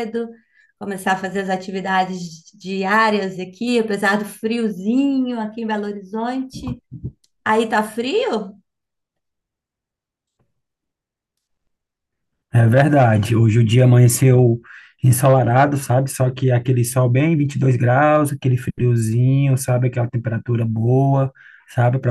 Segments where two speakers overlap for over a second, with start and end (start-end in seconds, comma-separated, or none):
none